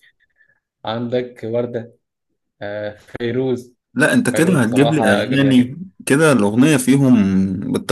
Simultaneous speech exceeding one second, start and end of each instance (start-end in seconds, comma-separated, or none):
4.3-5.8